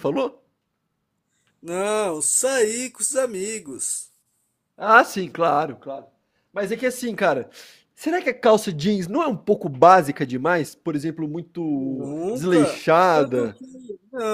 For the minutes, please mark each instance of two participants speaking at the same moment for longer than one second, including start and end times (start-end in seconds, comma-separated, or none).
11.8-13.6